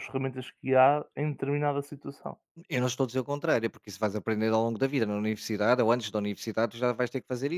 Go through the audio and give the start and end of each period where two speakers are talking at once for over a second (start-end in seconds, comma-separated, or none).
none